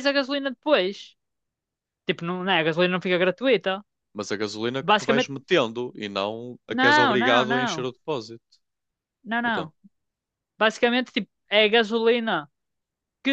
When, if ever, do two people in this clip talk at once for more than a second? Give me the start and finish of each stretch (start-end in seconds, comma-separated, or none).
6.7-7.9